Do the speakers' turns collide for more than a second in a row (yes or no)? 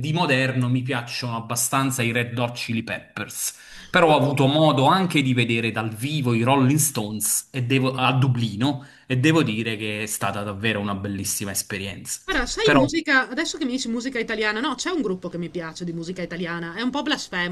no